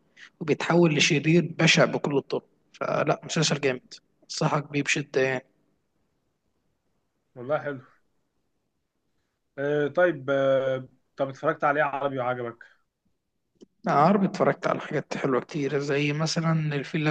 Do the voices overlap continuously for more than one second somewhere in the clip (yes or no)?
no